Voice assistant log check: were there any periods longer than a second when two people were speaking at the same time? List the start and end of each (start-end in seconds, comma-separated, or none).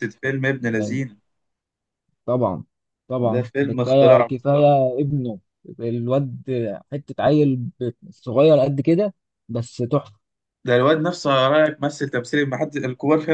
3.2-4.7